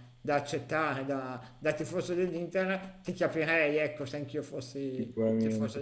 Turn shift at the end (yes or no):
yes